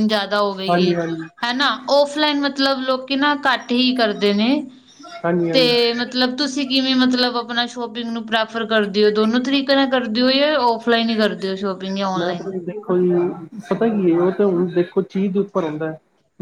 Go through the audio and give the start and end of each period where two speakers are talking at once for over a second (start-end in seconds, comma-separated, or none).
none